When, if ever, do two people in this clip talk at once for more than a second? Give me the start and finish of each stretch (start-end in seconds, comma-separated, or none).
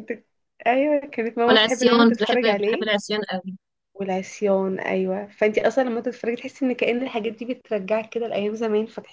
1.5-2.9